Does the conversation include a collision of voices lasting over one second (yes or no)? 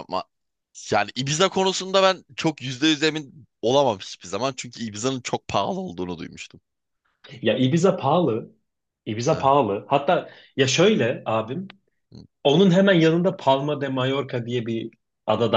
no